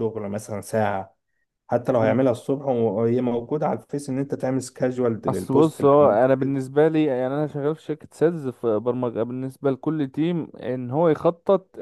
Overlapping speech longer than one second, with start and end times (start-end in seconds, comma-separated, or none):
5.3-6.6